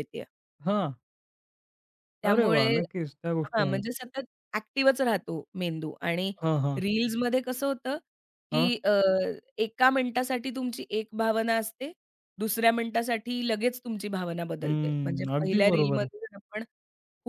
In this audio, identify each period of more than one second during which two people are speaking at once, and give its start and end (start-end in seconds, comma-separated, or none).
14.6-16.1